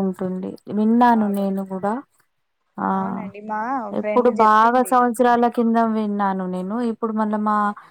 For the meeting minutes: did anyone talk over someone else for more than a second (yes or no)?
yes